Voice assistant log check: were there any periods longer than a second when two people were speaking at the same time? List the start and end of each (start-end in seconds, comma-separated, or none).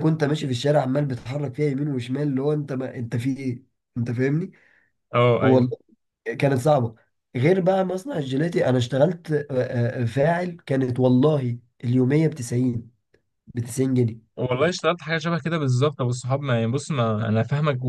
none